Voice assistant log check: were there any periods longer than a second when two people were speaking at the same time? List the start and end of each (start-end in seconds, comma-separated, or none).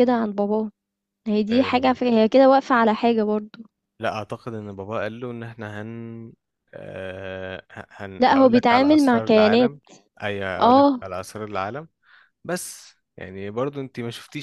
8.2-9.8